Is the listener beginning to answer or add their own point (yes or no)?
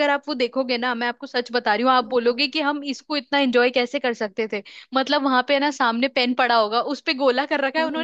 no